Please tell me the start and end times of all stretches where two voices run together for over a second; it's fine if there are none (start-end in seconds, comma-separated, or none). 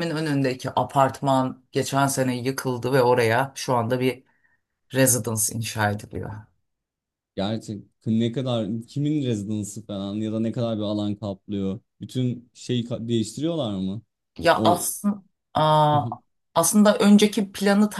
none